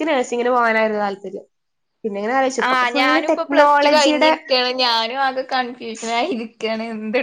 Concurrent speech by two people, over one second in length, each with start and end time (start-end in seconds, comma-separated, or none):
2.7-4.3